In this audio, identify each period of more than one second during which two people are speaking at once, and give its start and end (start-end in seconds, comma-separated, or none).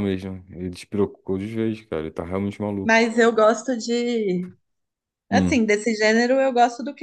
none